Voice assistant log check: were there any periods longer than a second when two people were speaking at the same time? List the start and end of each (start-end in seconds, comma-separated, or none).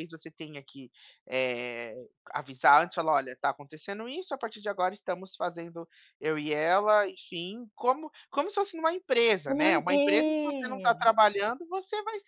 9.5-11.1